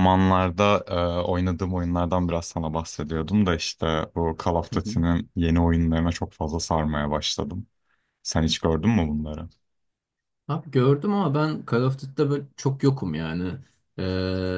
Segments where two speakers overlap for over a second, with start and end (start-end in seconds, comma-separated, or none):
none